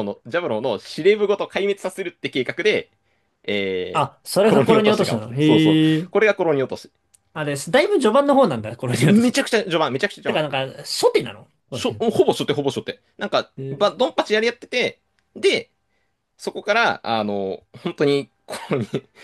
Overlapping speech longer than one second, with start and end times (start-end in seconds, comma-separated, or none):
3.9-6.1